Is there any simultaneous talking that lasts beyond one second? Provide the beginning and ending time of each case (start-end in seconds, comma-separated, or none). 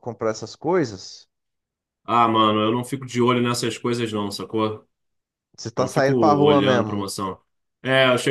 5.8-7.1